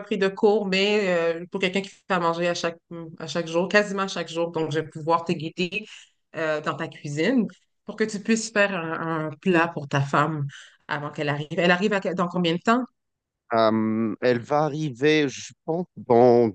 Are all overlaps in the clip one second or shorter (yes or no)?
yes